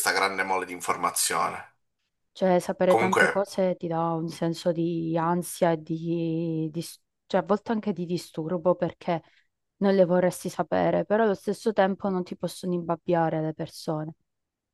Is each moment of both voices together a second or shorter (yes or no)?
yes